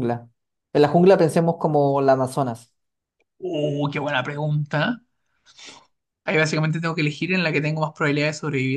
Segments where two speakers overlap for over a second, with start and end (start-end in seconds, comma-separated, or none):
none